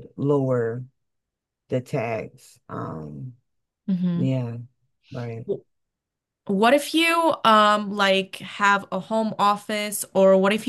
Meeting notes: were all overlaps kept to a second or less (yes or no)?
yes